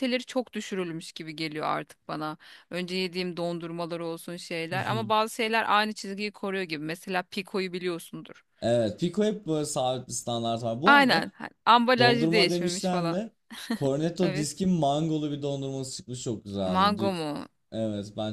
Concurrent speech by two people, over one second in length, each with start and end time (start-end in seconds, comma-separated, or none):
12.0-13.2